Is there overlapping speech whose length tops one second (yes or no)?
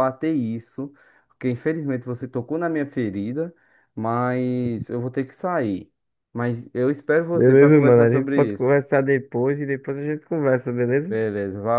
yes